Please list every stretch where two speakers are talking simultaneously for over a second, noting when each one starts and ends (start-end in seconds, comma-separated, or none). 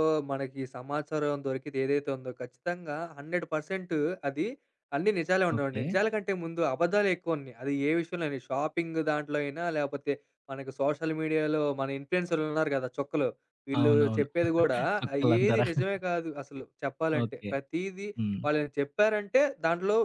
none